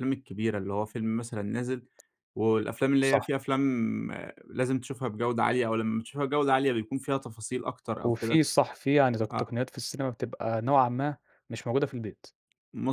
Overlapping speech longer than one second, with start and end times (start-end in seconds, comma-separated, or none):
none